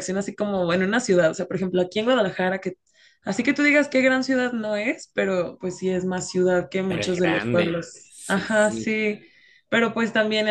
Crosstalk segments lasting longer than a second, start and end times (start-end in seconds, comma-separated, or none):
6.9-9.0